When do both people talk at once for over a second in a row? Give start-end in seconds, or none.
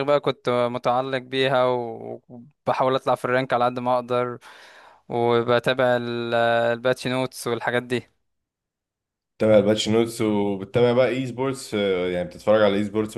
none